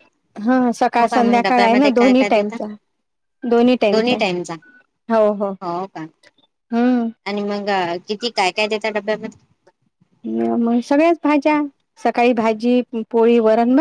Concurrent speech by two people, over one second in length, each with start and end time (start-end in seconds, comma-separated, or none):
1.0-2.6